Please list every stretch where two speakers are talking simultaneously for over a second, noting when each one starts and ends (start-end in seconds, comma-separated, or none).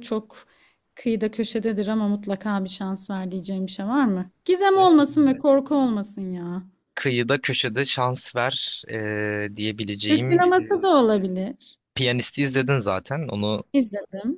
none